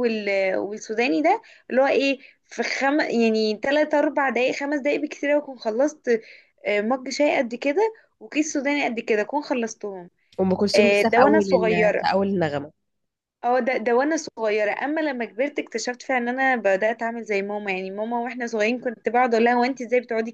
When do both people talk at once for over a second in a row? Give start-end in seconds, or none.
10.7-12.1